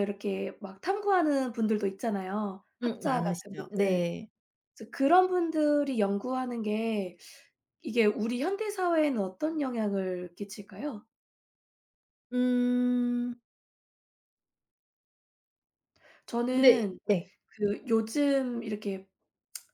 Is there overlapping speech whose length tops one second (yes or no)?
yes